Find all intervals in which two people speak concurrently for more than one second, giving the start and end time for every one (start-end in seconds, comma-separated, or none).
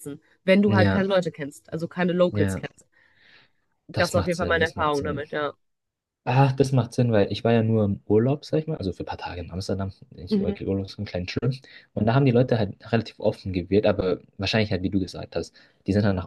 4.0-5.2